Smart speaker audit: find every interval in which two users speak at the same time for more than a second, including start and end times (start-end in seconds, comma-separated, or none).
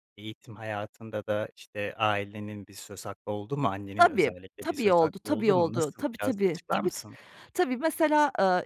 4.0-7.0